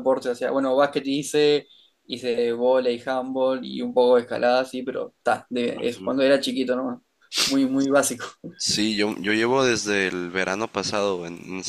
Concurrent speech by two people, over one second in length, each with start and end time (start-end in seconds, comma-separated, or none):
none